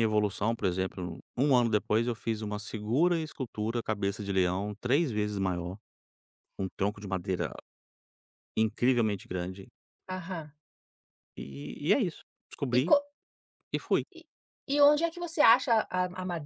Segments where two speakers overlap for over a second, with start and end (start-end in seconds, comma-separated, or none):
none